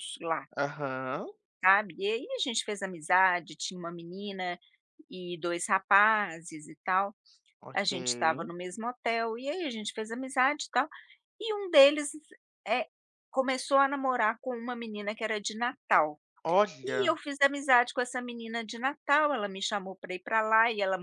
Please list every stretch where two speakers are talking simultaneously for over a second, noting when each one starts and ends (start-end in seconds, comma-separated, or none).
none